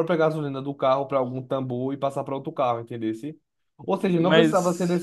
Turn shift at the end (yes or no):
no